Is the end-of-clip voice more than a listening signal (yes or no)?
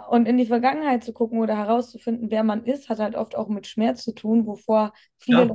no